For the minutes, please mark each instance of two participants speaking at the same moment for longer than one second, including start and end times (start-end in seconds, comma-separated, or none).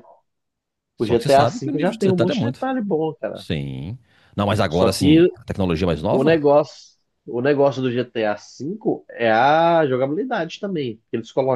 1.0-2.7